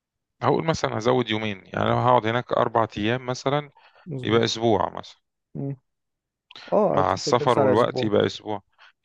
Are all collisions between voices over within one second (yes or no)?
no